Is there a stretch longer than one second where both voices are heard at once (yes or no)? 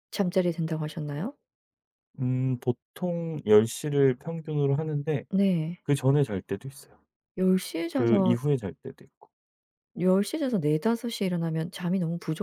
no